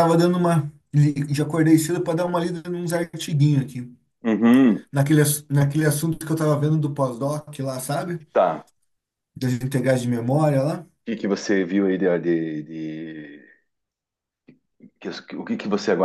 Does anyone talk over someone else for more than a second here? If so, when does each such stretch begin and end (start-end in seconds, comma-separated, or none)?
none